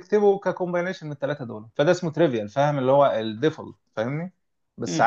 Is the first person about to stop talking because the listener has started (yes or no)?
no